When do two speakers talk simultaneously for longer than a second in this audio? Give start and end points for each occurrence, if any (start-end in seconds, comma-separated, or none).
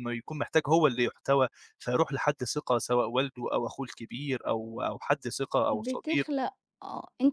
none